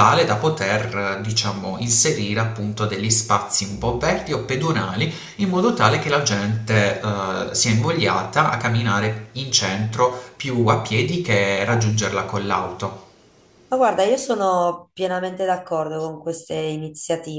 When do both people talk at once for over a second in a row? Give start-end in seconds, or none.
none